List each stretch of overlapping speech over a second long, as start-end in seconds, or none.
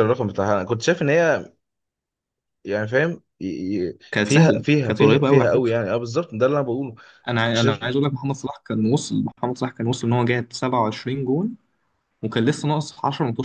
4.1-5.7